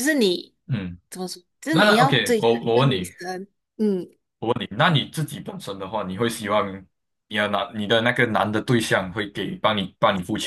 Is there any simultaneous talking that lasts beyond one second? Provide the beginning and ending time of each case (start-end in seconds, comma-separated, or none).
1.7-3.1